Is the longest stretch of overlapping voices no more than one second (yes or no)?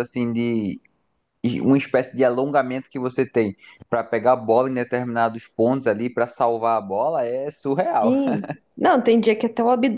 yes